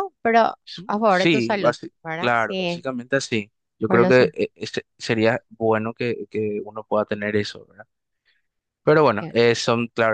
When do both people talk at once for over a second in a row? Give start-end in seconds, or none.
1.1-2.9